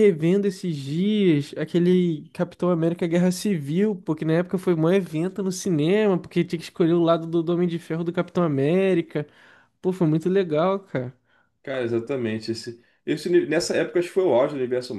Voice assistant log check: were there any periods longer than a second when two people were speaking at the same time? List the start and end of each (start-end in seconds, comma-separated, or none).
none